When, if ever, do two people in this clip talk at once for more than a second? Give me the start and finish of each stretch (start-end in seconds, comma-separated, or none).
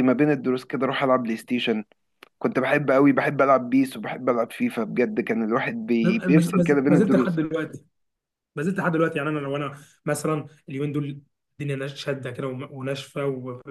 6.0-7.4